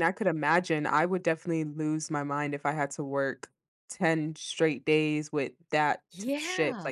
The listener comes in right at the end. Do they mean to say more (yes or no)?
no